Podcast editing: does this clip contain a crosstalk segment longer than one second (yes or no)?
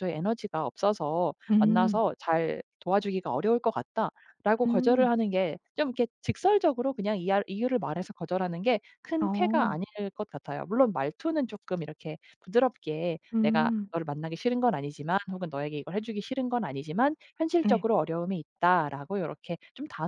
no